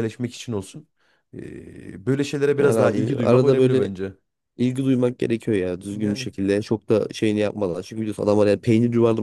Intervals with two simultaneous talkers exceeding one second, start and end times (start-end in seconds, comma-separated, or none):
2.6-3.9